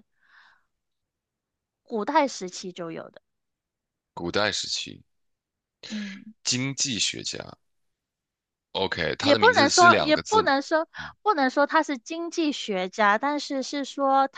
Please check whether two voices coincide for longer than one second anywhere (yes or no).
yes